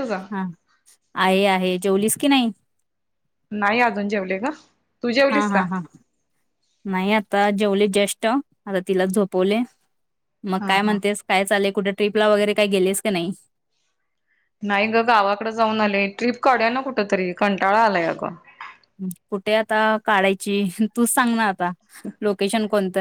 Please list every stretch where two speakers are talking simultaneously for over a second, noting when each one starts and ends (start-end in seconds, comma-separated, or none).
none